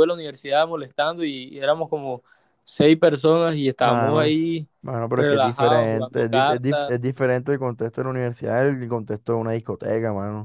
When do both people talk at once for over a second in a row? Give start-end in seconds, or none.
5.2-6.9